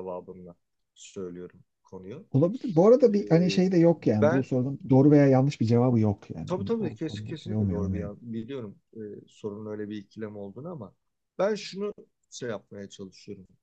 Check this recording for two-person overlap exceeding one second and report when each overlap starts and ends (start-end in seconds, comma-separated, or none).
3.1-4.5, 6.5-8.1